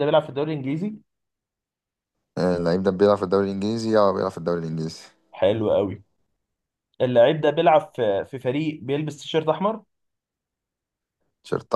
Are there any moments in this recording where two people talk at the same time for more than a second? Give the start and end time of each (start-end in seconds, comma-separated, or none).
none